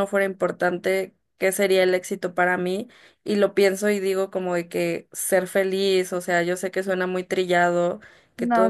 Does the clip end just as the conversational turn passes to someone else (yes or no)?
no